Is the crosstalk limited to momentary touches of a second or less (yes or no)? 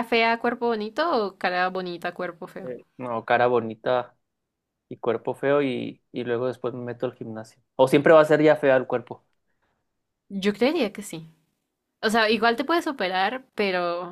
yes